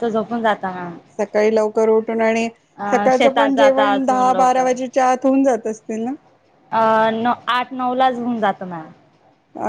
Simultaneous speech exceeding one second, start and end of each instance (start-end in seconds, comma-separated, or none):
2.9-4.7